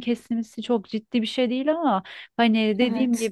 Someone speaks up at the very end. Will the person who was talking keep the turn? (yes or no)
yes